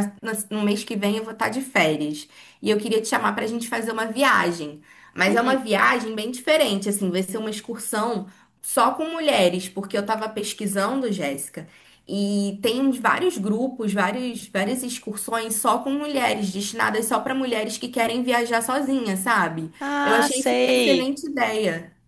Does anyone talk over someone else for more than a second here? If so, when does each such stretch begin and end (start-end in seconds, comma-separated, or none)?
19.8-21.1